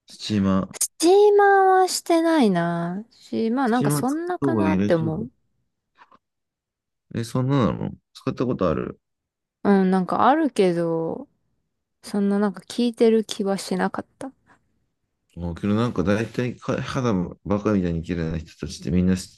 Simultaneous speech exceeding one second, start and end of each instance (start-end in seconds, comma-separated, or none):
3.6-5.1